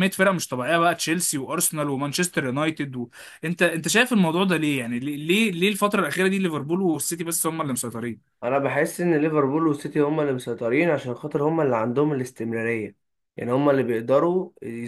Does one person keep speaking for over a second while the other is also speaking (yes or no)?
no